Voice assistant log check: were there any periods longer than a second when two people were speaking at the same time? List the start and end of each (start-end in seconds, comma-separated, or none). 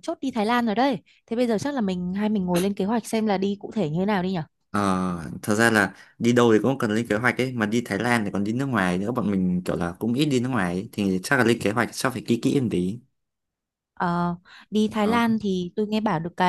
none